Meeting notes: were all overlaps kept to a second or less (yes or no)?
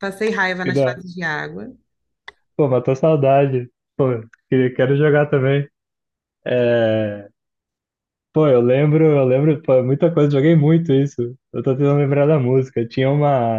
yes